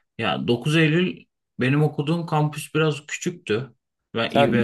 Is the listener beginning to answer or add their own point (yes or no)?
yes